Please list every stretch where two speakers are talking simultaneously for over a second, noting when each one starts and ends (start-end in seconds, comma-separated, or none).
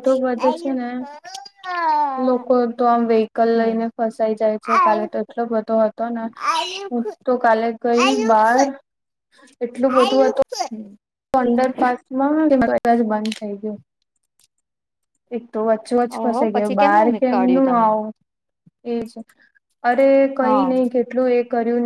16.2-17.9